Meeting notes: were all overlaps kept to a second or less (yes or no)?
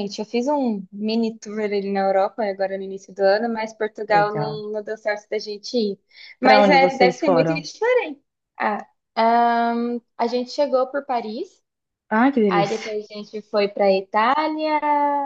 no